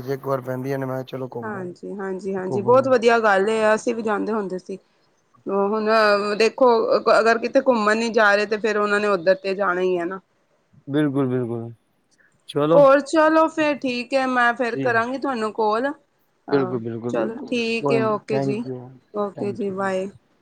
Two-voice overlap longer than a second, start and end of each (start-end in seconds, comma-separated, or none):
16.5-18.6